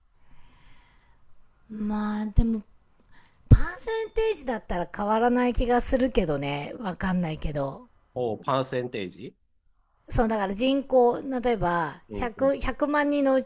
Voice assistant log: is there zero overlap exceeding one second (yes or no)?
yes